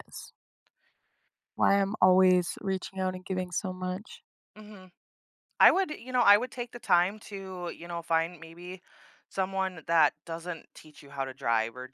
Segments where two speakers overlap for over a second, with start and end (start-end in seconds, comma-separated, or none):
none